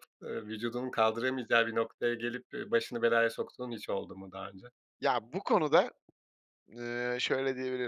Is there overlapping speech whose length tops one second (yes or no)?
no